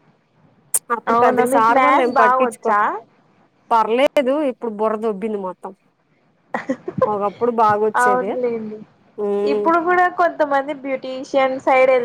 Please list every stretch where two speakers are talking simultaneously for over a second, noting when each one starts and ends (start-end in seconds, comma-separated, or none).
1.1-2.8